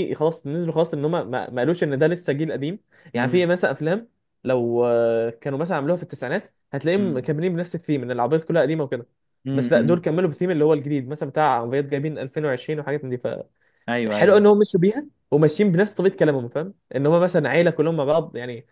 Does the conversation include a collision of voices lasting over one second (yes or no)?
no